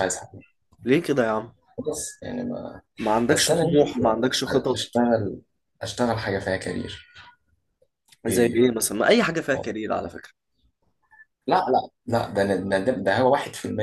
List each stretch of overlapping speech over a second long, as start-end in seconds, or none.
3.3-4.8